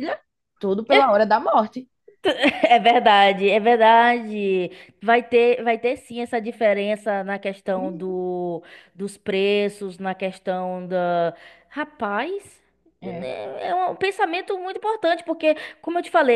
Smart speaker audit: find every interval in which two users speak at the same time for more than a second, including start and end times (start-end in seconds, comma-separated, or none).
none